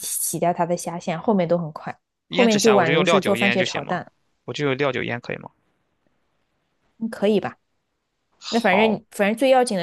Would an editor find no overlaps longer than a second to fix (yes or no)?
no